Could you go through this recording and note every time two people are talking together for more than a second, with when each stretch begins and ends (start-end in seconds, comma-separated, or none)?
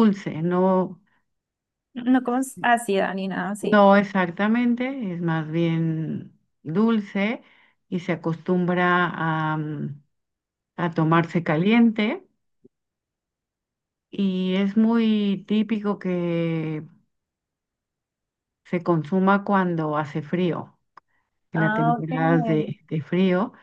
21.5-22.7